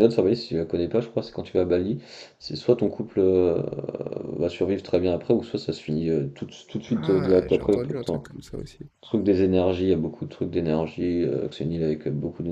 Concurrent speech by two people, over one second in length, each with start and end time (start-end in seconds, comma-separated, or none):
6.9-8.2